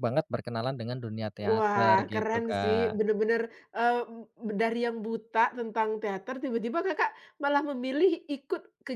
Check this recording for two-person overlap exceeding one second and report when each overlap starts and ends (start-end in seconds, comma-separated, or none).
1.4-3.0